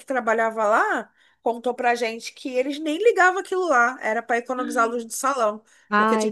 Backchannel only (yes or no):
yes